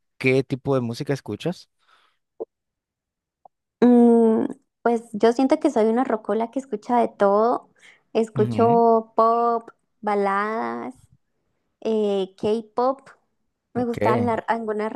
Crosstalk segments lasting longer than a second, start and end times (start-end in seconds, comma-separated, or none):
none